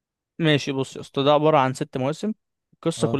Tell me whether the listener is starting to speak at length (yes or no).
no